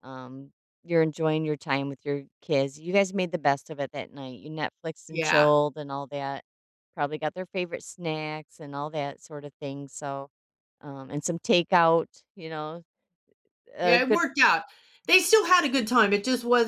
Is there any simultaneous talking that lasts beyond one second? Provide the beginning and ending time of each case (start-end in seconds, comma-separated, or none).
none